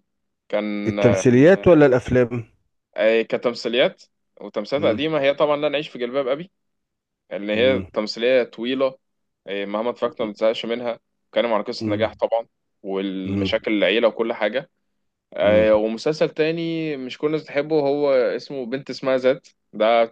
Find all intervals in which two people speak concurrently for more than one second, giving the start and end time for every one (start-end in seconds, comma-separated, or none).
none